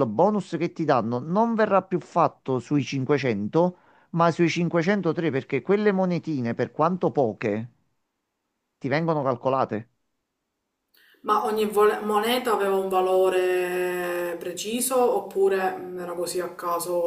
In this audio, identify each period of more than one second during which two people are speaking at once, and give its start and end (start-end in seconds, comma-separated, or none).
none